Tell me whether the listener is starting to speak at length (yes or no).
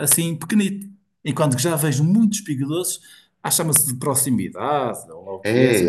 yes